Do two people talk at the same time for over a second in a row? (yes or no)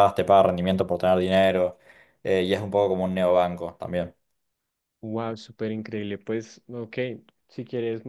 no